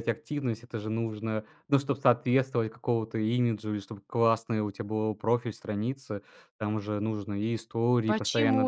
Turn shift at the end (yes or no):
yes